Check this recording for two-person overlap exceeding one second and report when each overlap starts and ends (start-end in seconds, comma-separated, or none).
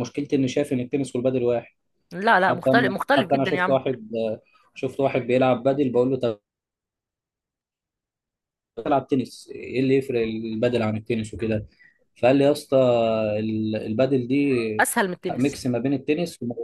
2.5-3.8